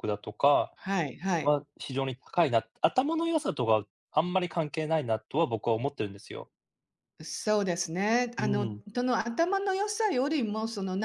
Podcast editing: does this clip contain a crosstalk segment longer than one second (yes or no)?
no